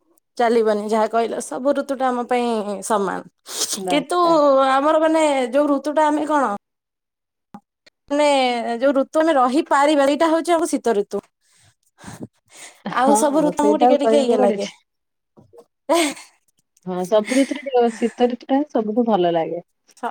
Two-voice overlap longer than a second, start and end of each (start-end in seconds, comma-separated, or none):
13.1-14.7